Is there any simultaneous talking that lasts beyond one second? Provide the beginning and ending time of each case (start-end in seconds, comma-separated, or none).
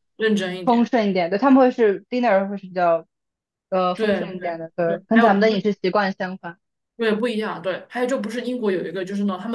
3.9-5.7